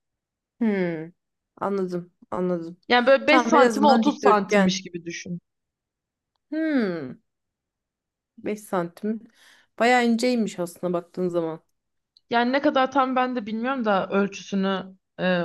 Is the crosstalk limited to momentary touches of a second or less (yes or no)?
no